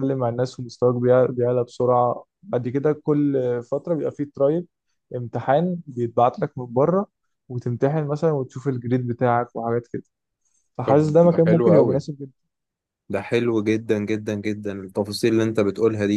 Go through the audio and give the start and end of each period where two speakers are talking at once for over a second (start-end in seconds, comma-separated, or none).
10.8-12.1